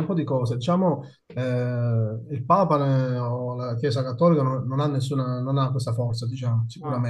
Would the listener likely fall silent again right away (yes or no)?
yes